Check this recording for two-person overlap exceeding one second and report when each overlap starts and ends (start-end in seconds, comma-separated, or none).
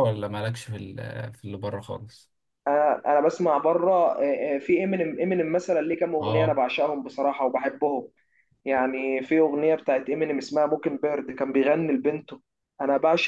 none